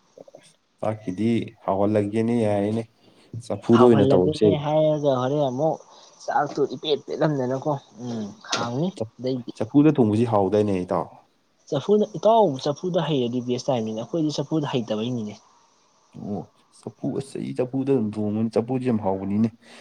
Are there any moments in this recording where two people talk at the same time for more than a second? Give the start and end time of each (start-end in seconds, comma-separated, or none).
none